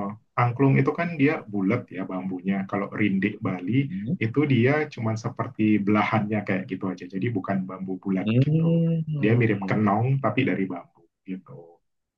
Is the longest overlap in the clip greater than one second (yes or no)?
yes